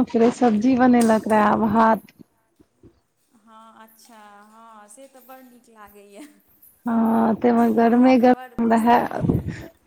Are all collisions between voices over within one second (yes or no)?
yes